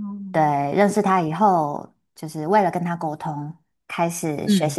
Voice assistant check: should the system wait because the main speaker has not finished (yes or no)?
yes